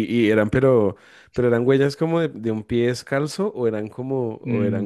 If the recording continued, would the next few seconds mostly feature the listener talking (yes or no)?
yes